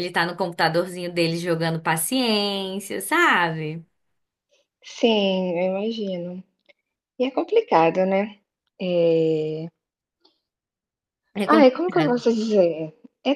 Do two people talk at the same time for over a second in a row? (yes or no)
no